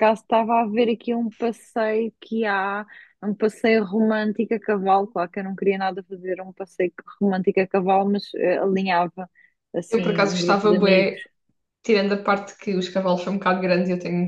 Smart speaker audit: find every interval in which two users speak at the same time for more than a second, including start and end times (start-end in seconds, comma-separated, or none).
9.9-11.2